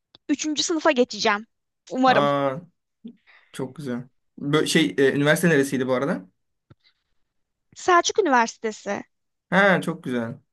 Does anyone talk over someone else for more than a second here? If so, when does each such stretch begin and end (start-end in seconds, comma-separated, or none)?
none